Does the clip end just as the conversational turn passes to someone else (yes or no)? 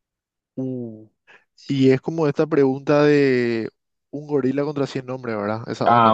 yes